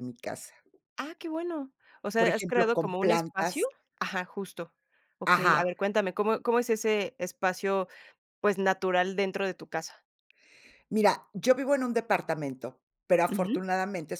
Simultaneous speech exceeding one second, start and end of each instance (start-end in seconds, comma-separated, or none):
2.2-3.7